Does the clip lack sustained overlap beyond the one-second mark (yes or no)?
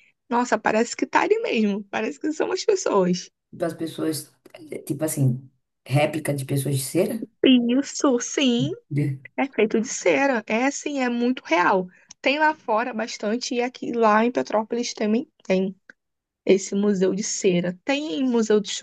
yes